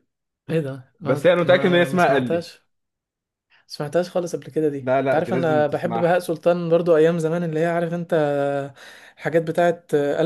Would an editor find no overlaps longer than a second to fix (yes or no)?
no